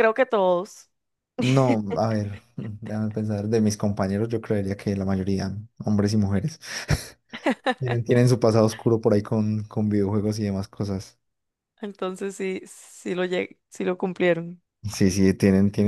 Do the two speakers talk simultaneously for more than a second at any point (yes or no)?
no